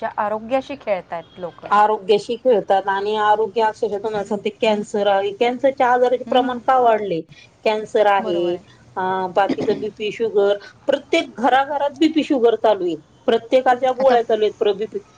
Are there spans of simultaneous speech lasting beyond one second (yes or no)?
no